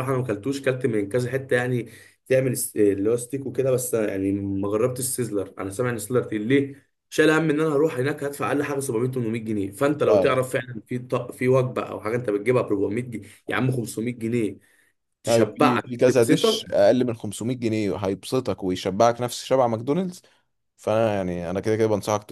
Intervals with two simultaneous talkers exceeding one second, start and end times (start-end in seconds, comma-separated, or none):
15.3-16.7